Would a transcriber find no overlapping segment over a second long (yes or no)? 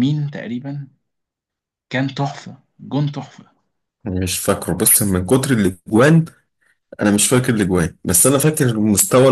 yes